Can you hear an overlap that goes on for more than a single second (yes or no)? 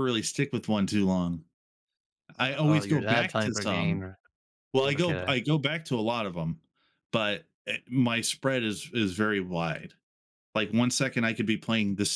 yes